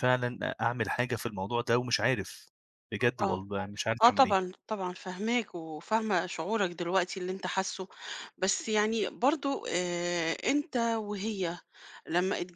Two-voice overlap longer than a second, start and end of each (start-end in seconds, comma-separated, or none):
none